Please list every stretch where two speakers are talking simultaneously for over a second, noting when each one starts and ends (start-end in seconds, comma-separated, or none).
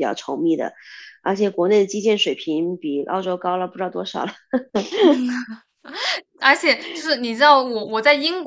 none